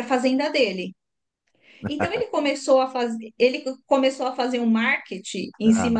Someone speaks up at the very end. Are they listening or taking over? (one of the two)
listening